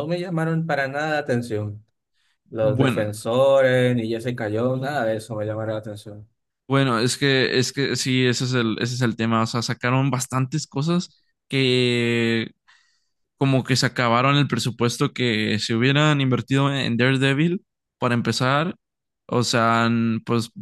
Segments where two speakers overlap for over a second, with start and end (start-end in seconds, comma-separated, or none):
none